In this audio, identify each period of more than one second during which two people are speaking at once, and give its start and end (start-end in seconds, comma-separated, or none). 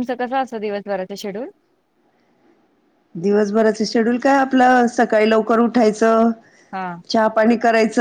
none